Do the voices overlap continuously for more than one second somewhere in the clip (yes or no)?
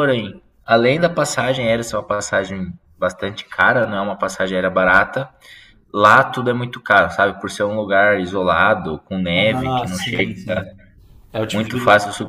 yes